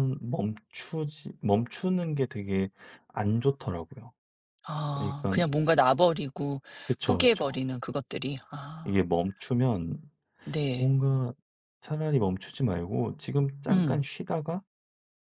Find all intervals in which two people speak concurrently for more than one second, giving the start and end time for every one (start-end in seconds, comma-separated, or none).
none